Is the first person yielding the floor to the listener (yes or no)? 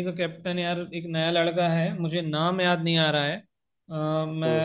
no